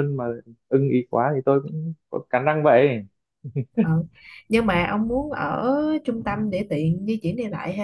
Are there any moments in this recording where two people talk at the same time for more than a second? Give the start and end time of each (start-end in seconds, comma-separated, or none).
none